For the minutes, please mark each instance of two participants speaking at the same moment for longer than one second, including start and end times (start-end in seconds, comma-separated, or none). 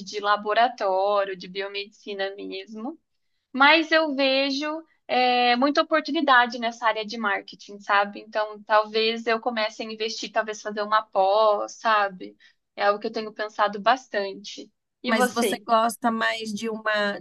none